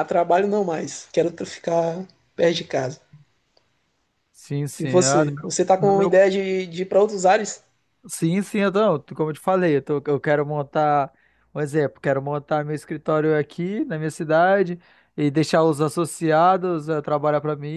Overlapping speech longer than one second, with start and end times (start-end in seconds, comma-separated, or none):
4.8-6.2